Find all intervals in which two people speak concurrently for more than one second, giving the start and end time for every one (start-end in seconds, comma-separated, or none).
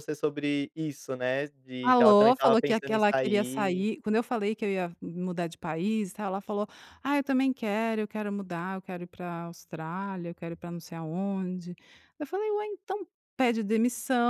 1.8-3.9